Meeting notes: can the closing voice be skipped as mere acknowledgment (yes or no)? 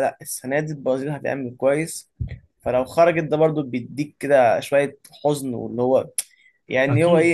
yes